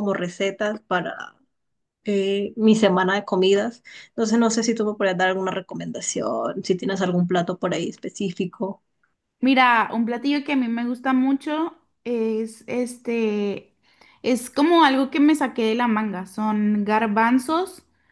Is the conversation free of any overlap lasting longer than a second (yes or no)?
yes